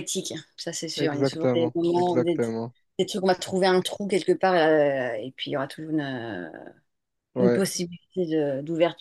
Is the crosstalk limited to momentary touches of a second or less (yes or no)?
no